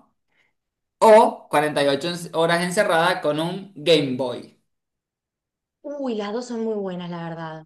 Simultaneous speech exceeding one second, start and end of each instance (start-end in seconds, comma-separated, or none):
none